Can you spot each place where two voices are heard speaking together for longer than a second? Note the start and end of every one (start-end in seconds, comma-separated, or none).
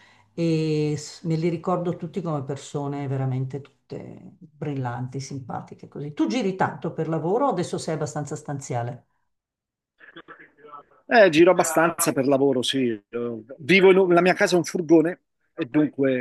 none